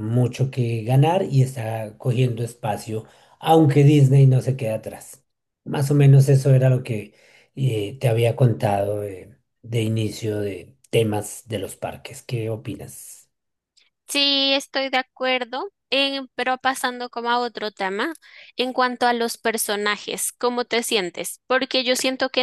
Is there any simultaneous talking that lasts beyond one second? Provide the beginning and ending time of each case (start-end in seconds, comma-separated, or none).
none